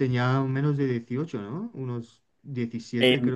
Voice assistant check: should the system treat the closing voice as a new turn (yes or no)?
yes